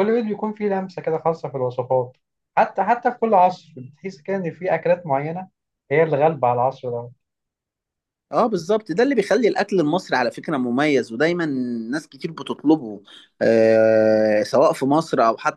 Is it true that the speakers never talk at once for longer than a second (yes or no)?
yes